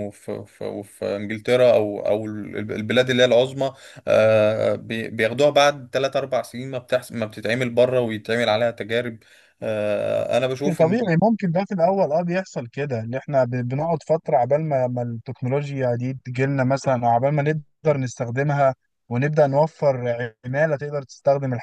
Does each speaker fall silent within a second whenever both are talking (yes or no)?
yes